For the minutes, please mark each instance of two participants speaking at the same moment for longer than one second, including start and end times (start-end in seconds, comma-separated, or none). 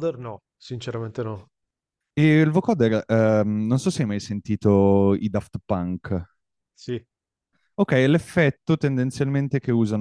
none